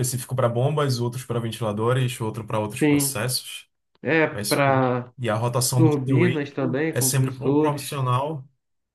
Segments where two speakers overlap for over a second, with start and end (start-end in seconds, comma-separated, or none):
5.8-8.0